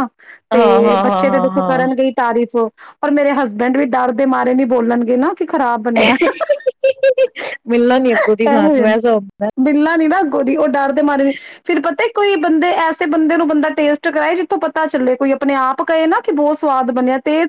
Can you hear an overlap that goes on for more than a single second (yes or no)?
yes